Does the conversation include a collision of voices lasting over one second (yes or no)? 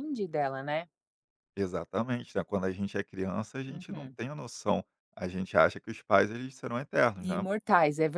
no